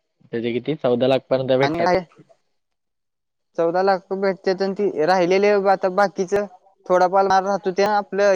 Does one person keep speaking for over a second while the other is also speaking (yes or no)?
no